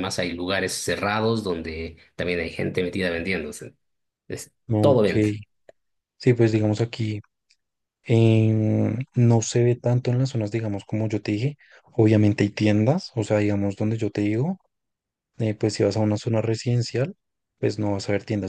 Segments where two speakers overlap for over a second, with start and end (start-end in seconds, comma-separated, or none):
none